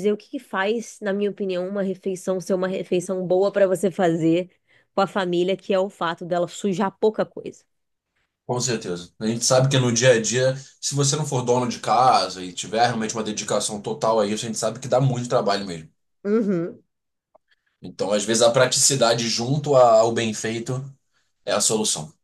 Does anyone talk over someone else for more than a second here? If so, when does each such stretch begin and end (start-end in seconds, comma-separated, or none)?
none